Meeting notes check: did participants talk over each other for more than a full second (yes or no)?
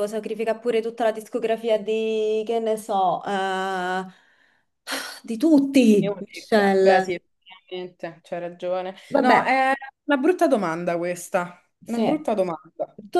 yes